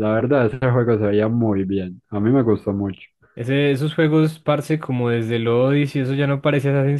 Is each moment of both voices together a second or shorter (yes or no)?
yes